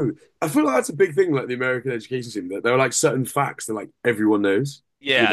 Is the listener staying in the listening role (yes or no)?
no